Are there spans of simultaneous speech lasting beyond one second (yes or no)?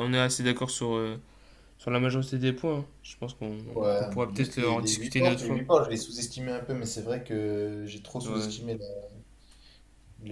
yes